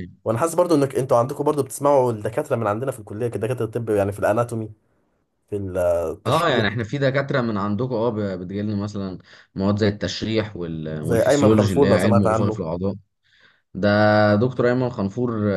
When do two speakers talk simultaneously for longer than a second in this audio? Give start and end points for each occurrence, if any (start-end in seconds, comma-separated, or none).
11.0-12.6